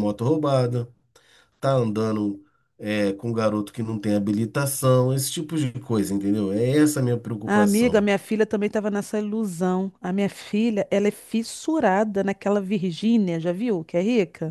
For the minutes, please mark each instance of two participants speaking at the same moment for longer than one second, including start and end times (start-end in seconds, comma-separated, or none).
none